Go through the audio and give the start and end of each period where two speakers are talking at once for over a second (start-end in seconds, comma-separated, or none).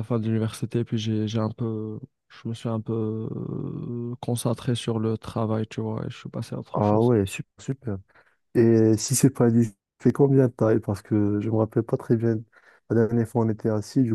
none